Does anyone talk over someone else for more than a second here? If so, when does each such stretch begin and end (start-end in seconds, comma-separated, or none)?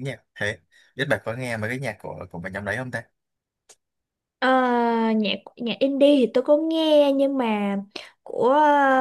none